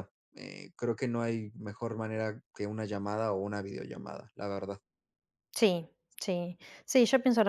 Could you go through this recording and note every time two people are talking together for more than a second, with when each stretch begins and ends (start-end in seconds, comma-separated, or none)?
none